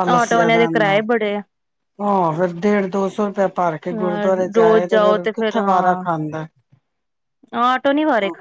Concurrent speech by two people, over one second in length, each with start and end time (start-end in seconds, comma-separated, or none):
3.9-6.0